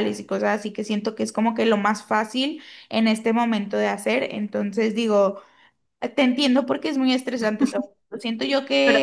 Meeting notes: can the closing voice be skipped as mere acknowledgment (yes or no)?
yes